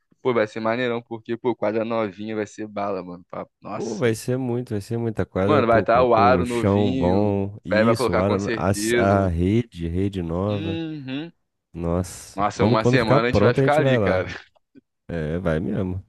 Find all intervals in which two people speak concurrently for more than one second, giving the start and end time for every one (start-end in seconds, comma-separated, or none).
5.5-9.3, 12.3-14.2